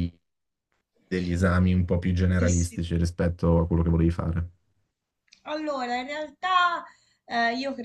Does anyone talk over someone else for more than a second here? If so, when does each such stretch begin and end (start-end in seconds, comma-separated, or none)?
none